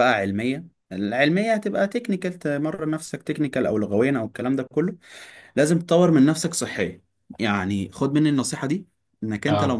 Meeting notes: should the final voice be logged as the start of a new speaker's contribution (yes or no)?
no